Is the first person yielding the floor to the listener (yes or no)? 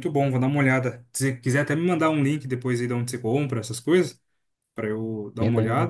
no